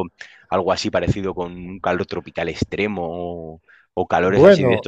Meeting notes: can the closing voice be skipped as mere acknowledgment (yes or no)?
yes